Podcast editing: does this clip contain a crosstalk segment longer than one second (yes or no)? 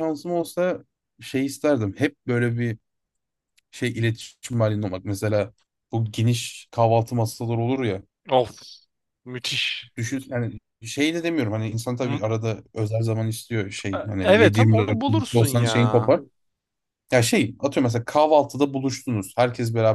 yes